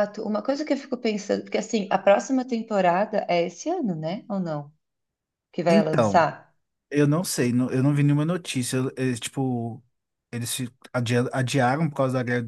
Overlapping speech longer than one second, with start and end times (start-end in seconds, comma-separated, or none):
none